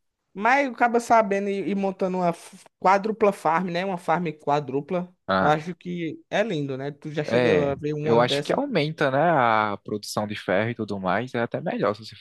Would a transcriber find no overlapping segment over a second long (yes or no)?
no